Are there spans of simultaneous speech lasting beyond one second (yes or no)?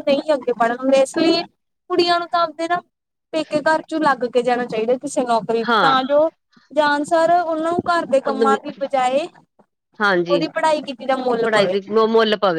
no